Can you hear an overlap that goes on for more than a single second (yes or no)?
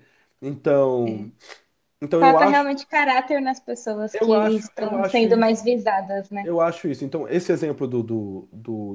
yes